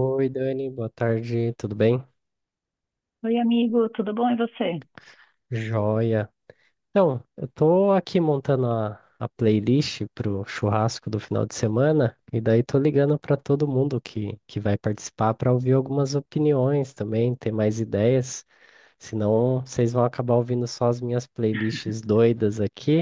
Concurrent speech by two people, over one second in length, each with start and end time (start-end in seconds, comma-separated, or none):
none